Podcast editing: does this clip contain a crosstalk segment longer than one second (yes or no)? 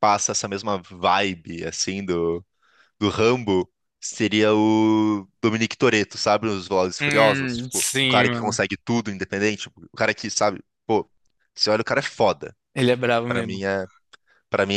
yes